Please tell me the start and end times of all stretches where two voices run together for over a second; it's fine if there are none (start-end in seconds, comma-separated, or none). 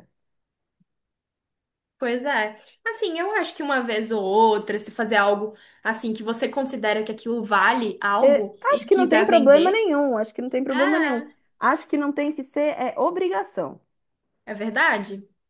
8.2-9.9